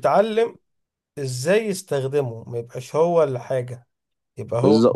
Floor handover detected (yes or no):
yes